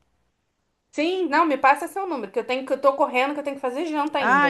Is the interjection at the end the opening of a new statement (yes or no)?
yes